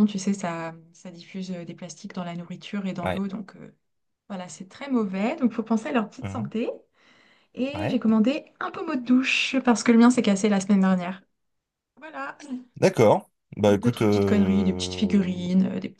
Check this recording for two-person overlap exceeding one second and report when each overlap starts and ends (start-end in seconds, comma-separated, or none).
13.7-15.3